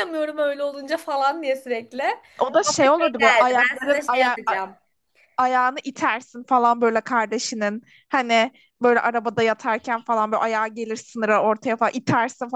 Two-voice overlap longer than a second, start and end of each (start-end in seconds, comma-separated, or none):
2.4-4.4